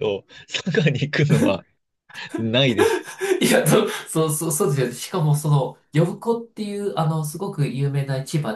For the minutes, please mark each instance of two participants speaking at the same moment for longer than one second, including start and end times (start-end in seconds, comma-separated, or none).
none